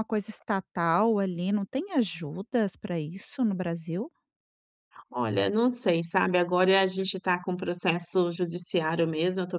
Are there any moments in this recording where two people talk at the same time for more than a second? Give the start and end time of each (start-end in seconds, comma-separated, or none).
none